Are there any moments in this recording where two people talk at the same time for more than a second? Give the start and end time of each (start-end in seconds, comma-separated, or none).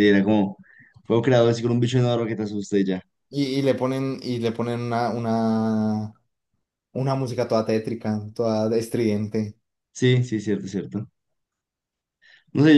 none